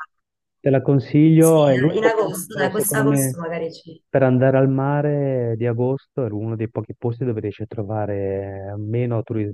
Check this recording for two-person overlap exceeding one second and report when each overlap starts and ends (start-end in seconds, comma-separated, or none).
1.4-3.4